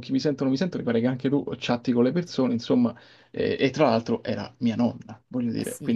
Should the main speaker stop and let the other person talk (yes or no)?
yes